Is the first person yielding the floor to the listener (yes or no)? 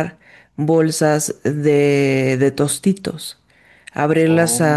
no